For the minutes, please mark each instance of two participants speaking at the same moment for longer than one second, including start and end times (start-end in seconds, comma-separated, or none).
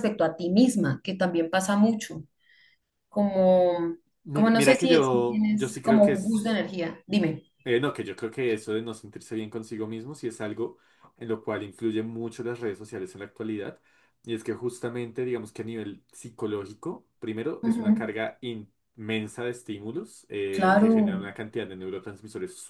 4.3-6.4